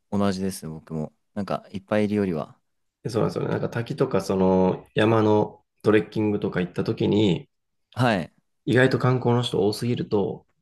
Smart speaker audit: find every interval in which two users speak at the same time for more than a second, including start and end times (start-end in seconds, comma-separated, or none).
none